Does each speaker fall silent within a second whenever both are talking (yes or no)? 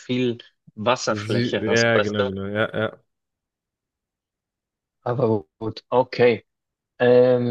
no